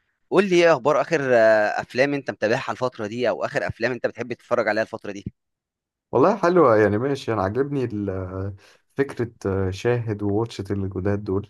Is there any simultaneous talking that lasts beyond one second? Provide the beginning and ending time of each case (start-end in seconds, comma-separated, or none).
none